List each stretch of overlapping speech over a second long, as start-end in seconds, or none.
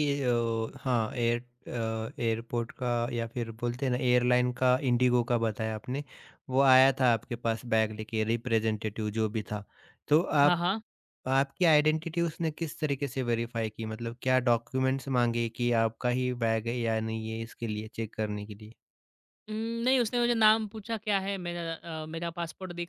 none